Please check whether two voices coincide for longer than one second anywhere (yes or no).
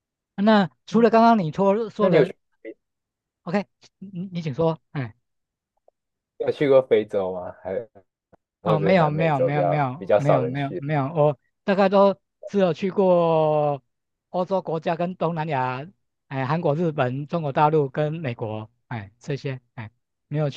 yes